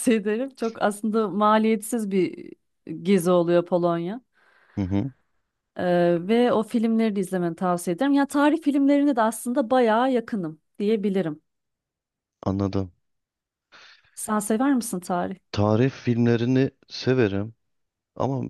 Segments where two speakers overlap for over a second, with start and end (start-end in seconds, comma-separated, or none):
none